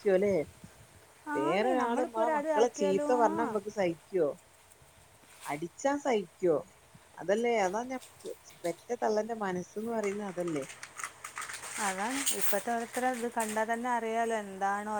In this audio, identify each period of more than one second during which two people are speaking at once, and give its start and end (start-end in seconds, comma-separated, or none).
1.4-3.5